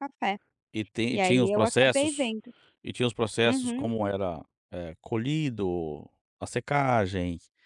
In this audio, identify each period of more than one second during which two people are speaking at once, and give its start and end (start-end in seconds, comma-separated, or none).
1.1-2.4